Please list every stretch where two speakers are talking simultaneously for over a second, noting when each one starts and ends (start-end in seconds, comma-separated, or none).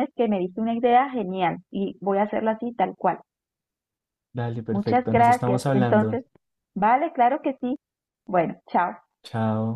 4.7-6.2